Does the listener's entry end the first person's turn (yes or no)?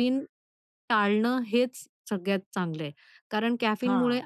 no